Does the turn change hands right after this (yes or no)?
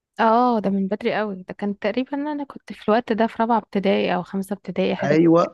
yes